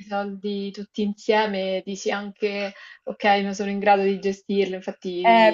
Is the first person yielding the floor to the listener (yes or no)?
yes